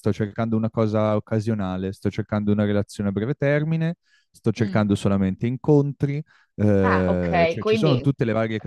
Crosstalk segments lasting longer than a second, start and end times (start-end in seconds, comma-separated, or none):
6.8-8.1